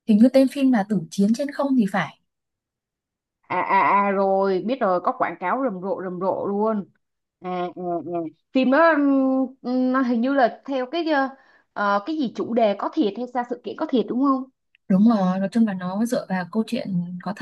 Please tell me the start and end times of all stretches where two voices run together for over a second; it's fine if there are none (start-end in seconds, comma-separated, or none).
none